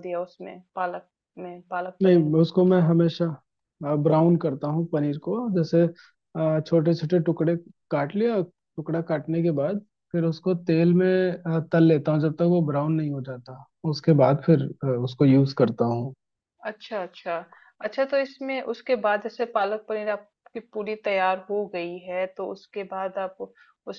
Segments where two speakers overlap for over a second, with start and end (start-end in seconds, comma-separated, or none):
none